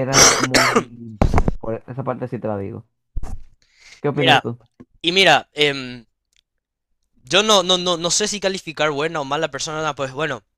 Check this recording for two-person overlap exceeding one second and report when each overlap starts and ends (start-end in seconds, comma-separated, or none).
none